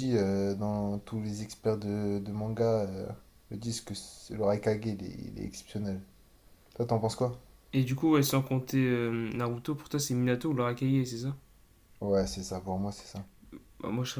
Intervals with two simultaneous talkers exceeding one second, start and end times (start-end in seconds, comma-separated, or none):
none